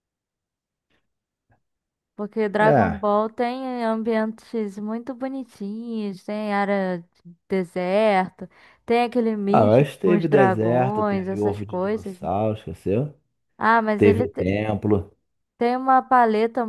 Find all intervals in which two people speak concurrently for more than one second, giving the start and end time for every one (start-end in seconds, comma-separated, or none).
9.5-12.2